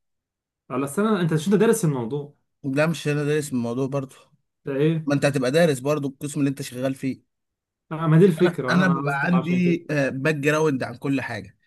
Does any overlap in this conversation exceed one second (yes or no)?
yes